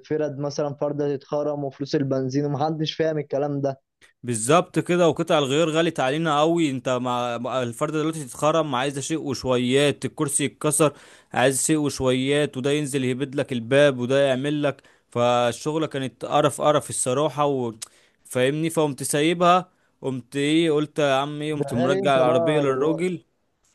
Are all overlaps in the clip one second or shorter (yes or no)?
no